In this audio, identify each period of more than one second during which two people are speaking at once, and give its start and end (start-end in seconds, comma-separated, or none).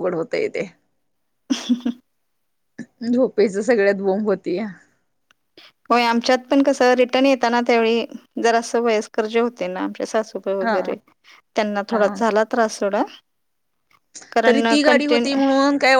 none